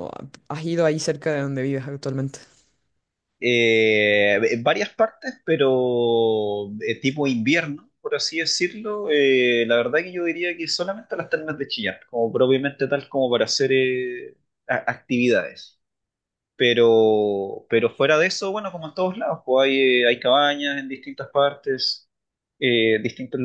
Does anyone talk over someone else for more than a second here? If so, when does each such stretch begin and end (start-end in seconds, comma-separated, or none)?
none